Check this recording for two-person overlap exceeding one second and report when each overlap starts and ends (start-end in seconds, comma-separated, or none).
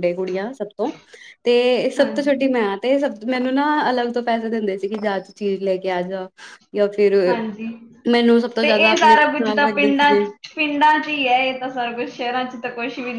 8.6-10.2